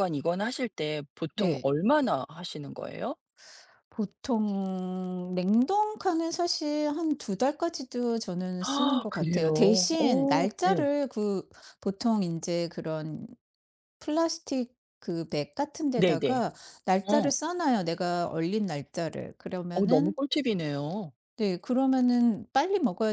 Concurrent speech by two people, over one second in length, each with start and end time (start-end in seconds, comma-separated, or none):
8.6-10.9